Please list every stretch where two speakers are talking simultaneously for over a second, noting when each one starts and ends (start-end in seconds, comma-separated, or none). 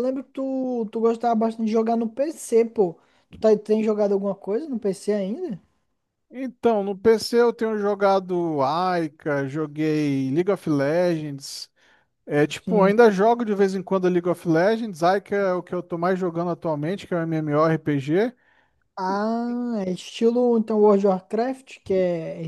none